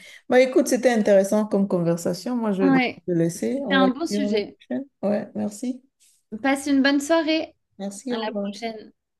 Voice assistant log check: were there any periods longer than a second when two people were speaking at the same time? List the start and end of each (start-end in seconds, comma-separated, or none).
2.6-4.6